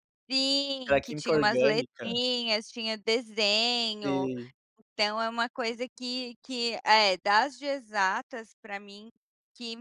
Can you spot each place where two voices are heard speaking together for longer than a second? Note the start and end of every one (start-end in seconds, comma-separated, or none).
0.9-2.1